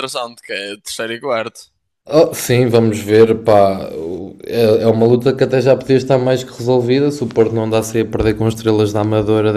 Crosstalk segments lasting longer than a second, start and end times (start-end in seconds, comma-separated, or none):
none